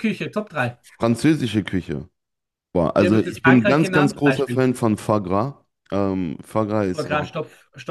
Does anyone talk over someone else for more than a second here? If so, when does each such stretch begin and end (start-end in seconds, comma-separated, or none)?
3.0-4.7